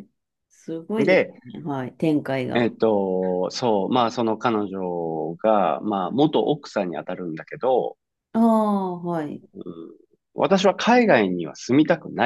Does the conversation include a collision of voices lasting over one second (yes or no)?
no